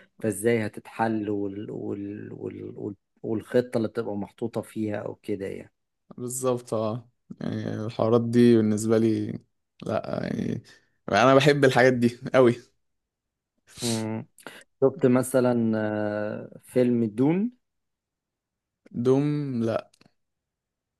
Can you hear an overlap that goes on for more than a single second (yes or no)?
no